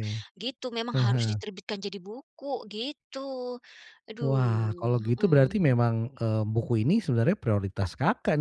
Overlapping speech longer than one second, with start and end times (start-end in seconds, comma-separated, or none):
4.2-5.7